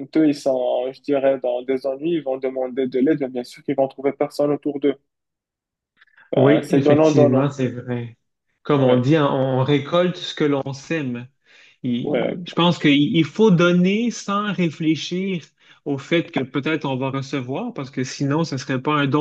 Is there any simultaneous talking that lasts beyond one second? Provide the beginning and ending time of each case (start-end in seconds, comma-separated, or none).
6.3-7.6